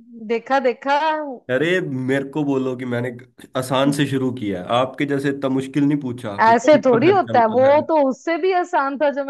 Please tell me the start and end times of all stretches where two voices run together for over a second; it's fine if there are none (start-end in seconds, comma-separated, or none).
6.5-7.8